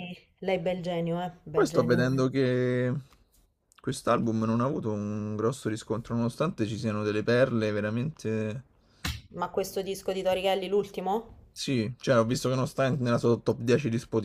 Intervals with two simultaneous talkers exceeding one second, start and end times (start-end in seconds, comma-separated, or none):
none